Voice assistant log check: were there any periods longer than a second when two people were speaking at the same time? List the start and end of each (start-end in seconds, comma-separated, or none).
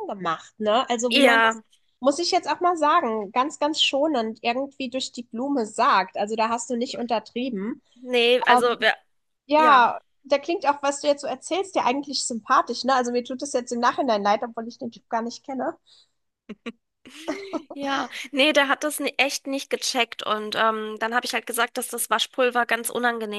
none